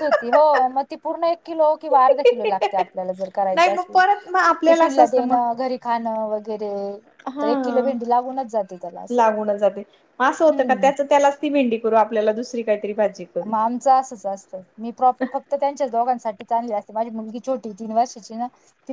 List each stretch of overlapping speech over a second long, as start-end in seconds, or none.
3.5-5.4